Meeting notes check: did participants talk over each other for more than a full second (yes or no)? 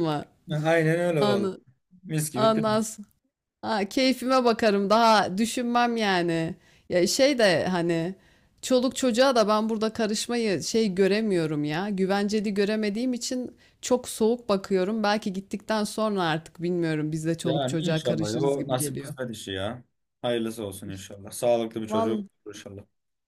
yes